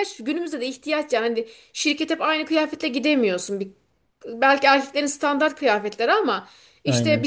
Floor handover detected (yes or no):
no